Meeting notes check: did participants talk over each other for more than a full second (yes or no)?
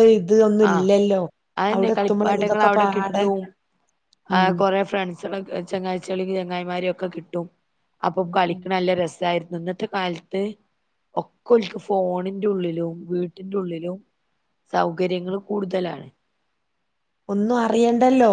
yes